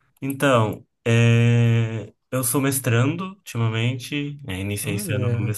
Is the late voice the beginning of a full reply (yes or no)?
no